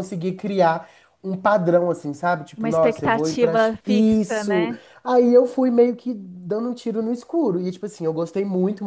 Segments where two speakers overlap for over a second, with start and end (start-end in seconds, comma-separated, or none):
2.6-4.8